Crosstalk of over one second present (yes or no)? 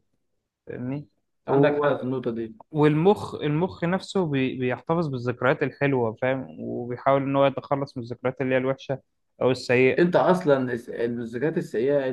no